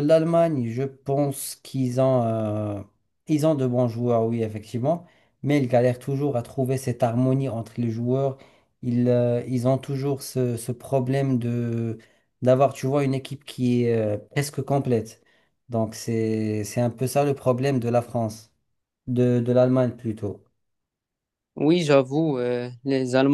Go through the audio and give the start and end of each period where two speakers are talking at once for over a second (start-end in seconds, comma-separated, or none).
none